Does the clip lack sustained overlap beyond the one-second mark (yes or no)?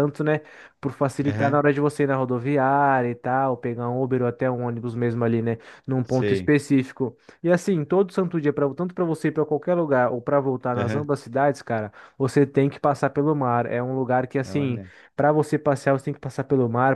yes